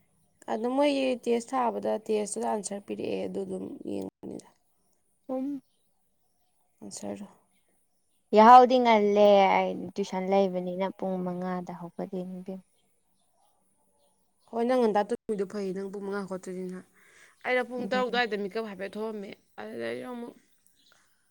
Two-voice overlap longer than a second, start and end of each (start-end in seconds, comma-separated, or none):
none